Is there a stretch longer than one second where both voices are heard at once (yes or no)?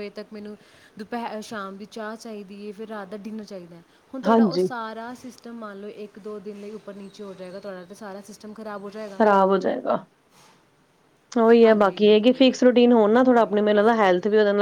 no